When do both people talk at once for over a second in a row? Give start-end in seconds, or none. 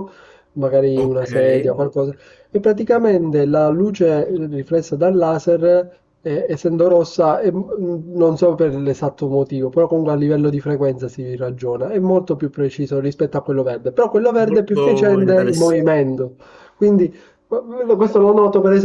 14.4-15.9